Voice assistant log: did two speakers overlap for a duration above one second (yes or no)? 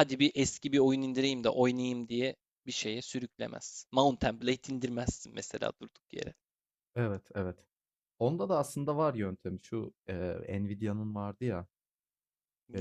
no